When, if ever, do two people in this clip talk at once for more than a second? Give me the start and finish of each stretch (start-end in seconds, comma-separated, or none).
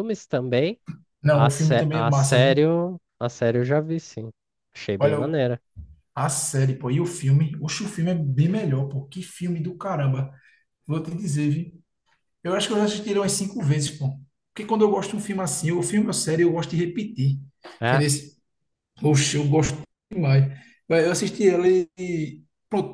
1.3-2.6